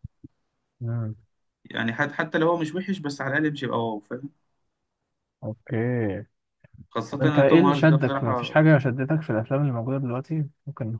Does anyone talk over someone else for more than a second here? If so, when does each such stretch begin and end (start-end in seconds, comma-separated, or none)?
7.1-8.6